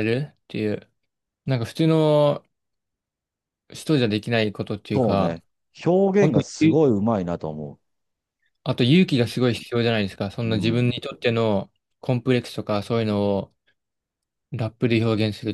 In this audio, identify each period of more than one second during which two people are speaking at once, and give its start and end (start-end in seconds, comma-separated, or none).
none